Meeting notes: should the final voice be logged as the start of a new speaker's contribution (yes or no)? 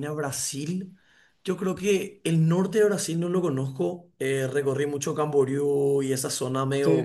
no